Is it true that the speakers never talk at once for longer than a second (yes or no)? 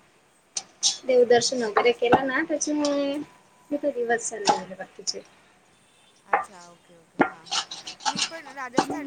no